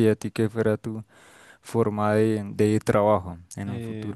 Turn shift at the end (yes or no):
yes